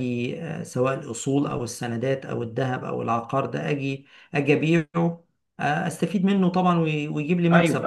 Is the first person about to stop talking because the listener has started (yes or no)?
yes